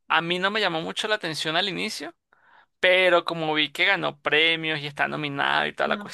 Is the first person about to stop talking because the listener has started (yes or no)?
no